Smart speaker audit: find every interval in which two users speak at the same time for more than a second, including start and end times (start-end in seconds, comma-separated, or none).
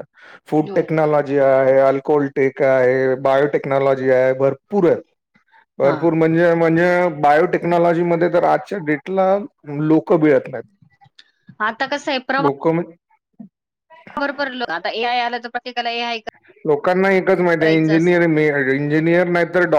none